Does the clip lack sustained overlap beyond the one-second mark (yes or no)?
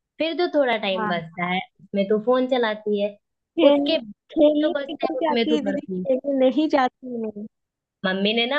no